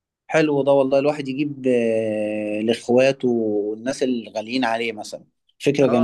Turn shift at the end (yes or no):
yes